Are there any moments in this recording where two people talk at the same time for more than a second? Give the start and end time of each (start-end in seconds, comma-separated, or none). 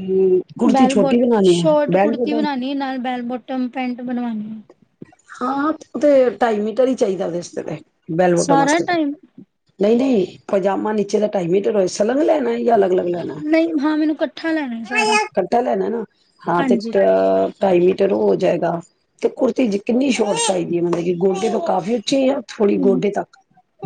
0.7-2.4